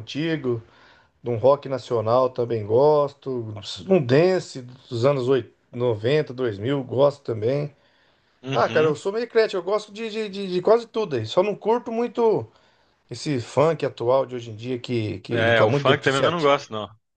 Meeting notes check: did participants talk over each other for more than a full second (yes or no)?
yes